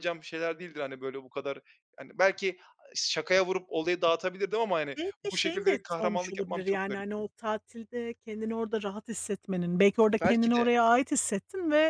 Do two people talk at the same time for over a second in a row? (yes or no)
yes